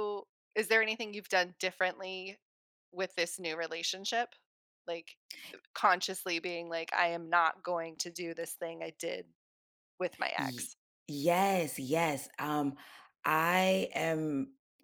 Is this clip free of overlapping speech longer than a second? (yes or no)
yes